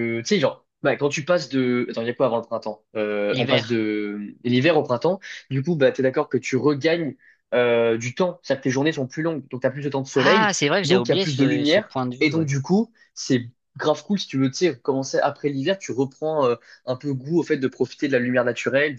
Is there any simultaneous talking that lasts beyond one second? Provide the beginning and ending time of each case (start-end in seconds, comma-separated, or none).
10.1-12.5